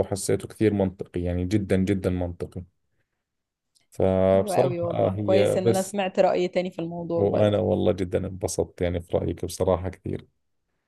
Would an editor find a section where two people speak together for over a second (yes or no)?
yes